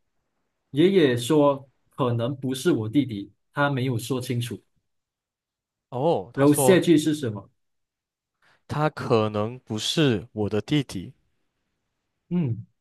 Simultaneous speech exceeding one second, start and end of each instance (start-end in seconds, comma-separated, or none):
none